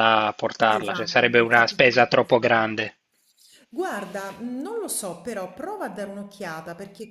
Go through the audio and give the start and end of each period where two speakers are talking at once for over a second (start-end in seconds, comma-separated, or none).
0.7-2.6